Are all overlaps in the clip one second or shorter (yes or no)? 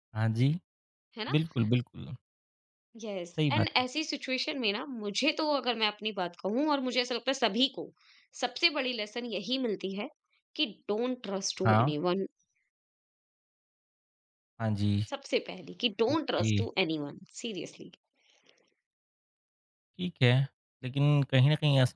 yes